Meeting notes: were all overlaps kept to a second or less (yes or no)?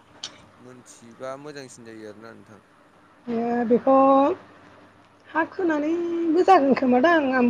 yes